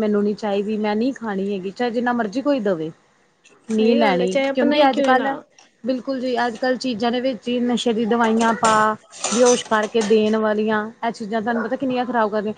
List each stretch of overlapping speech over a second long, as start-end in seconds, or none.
3.8-5.3